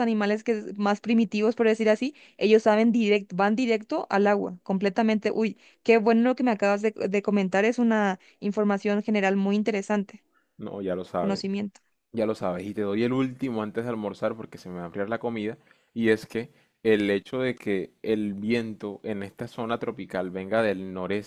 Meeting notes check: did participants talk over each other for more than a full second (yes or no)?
no